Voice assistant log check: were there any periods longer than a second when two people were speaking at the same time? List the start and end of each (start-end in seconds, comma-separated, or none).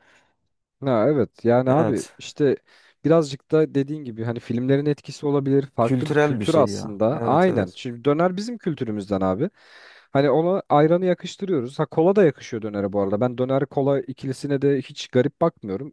5.8-7.8